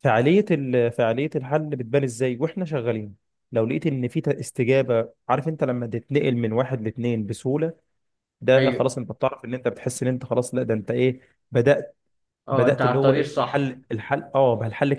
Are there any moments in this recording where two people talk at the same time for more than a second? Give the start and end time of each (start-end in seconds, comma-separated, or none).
12.5-13.8